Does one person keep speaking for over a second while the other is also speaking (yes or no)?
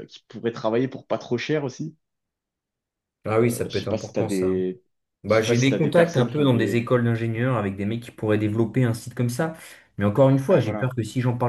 yes